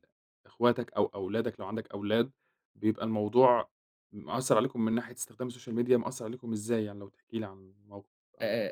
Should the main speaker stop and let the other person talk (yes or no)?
yes